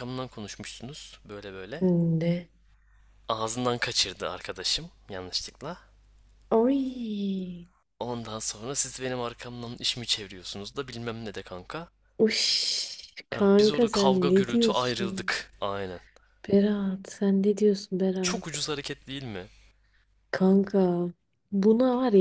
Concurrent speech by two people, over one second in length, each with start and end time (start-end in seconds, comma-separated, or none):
13.3-15.3